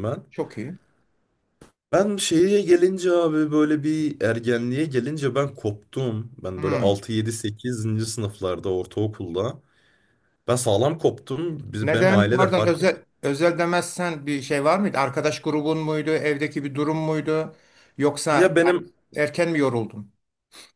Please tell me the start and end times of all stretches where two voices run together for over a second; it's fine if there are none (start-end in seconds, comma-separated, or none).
11.8-13.0